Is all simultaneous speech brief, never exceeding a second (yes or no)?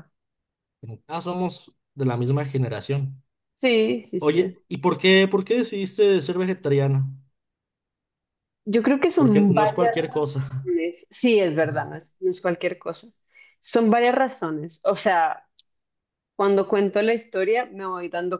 no